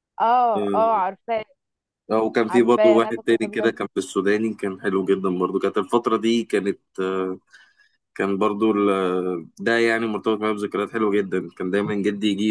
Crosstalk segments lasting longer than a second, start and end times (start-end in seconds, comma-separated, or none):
2.5-3.7